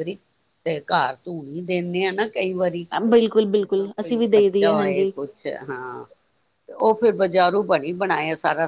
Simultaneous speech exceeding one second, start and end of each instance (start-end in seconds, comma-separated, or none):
3.6-5.1